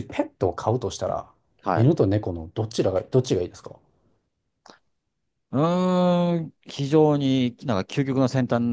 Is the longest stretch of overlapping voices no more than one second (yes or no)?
yes